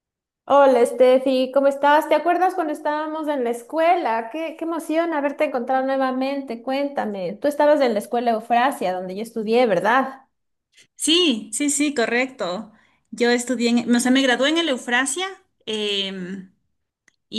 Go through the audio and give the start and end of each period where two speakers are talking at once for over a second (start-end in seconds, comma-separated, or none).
none